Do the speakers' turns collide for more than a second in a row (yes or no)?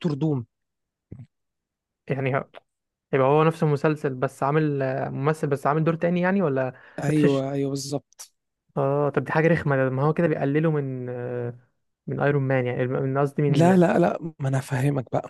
no